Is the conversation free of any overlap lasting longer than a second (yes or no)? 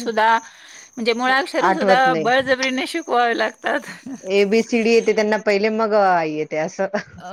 yes